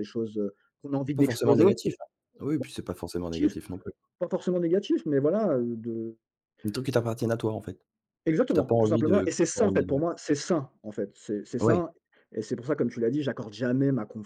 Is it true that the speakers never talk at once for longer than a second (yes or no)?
no